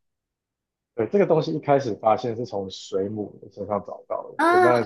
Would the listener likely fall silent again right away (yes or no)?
yes